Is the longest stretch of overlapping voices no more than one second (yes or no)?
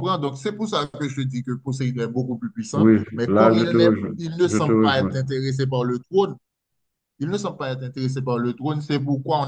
no